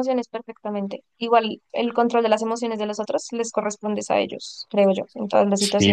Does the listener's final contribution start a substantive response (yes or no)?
yes